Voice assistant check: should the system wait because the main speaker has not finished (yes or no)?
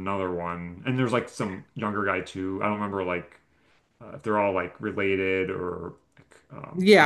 no